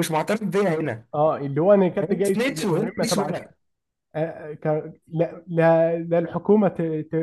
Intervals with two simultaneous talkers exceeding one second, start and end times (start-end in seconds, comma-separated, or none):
2.0-3.5